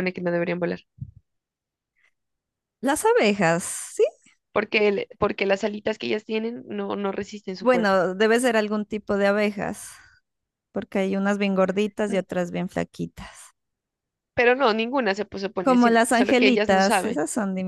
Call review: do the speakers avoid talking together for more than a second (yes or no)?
no